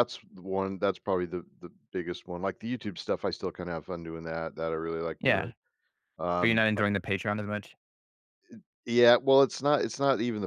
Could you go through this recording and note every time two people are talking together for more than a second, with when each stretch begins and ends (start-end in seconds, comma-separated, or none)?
none